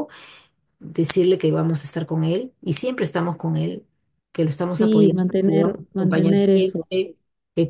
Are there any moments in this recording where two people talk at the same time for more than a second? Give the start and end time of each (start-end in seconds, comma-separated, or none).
4.7-6.9